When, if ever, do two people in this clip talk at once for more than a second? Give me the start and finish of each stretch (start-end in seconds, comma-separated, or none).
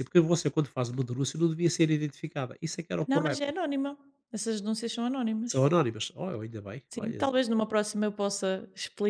none